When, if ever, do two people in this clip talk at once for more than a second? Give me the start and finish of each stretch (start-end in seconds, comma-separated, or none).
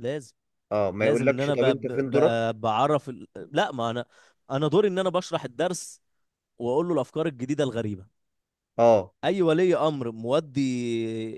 1.0-2.5